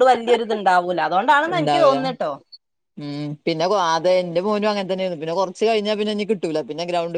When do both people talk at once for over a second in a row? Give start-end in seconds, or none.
none